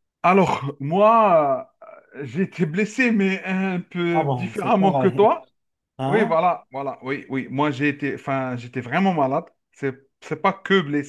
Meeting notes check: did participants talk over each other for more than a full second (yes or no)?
yes